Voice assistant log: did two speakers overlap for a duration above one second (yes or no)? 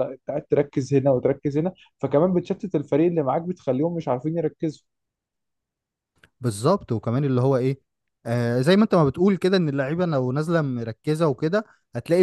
no